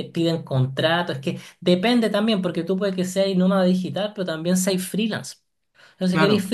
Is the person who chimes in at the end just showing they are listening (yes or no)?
yes